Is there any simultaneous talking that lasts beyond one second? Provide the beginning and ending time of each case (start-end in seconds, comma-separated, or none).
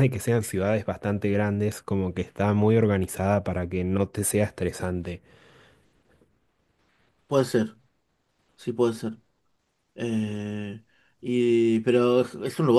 none